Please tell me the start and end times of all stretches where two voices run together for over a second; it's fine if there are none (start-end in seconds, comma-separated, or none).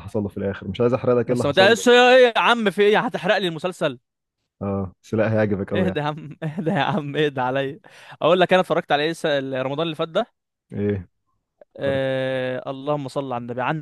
none